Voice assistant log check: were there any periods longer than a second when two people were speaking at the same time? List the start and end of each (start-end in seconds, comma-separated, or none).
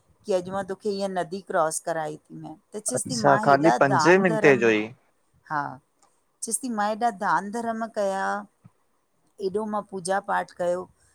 2.9-4.6